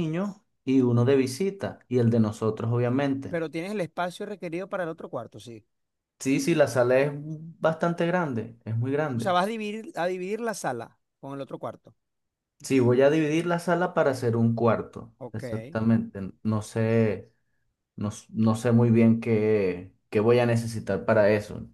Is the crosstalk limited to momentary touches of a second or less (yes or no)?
yes